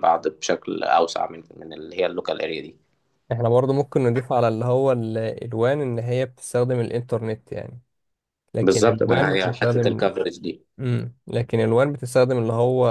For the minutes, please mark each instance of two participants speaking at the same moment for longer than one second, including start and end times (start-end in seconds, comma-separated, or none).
8.6-10.0